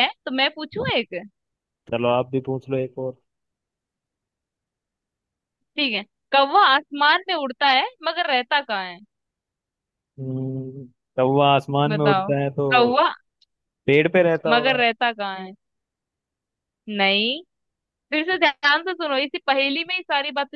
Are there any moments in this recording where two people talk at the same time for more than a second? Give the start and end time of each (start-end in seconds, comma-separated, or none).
none